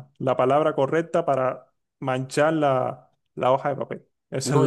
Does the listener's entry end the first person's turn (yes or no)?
yes